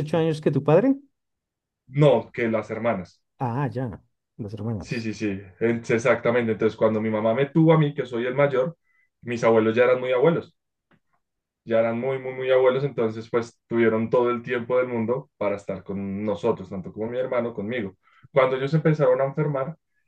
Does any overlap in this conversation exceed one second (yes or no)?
no